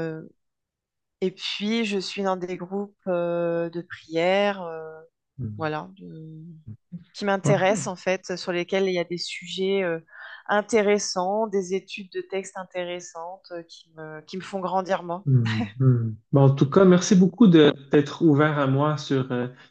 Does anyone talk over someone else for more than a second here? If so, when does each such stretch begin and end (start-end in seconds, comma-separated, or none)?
none